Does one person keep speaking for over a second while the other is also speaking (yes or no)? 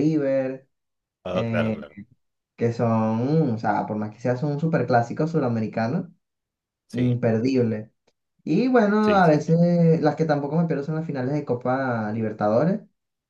no